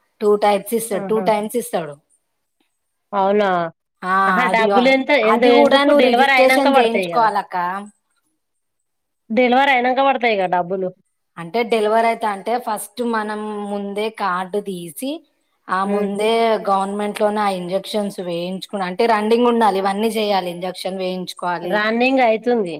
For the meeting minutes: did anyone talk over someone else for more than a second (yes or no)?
yes